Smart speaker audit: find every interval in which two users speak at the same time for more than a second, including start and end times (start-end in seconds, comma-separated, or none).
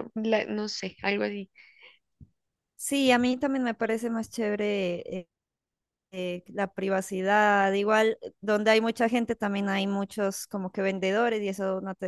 none